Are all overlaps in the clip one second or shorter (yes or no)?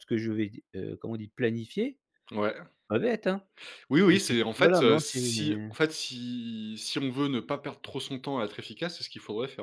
no